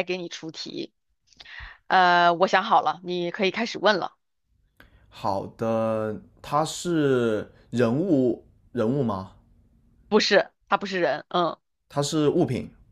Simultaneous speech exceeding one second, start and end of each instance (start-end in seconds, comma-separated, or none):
none